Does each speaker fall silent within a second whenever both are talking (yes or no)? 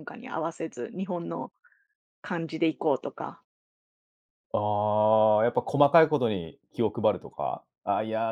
yes